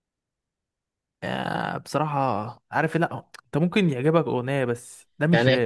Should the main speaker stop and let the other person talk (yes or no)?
yes